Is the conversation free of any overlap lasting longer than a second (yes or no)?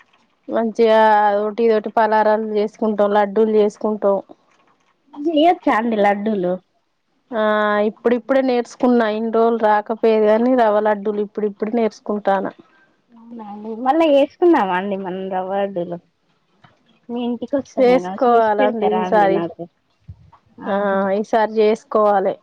no